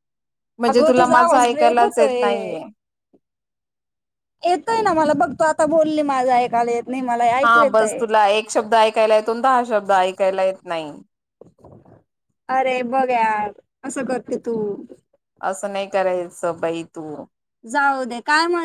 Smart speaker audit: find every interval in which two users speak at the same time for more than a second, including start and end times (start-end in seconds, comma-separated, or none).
0.7-2.2